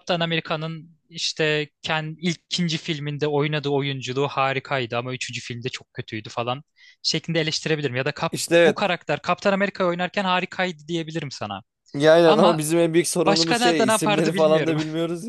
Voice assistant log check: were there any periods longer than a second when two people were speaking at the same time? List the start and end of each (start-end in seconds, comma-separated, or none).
13.2-14.8